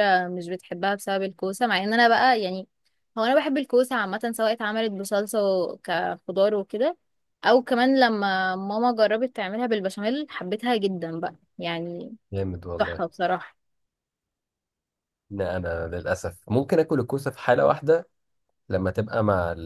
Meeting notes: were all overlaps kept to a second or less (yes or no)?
yes